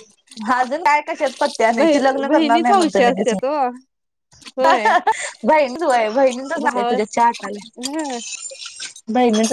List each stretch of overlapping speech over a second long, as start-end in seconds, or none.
1.8-3.4